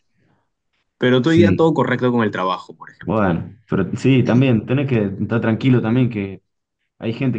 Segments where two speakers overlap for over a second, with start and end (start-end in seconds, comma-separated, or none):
none